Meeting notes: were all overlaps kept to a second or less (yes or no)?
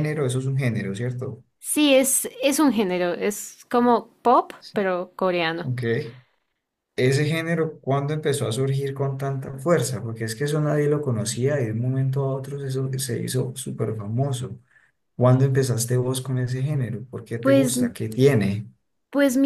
yes